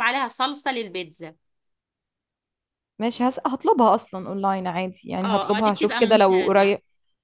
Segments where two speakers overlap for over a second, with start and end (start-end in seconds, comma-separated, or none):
5.2-6.7